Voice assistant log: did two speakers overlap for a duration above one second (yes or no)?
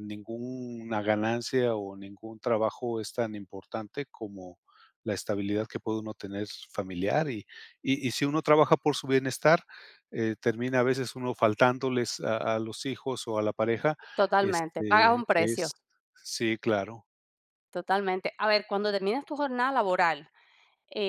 yes